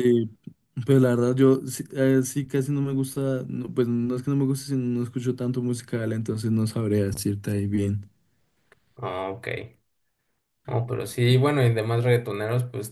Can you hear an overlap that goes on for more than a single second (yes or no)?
no